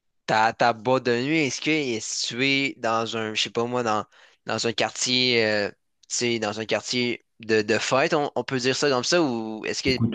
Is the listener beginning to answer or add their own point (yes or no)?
yes